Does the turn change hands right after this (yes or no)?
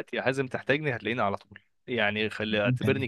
no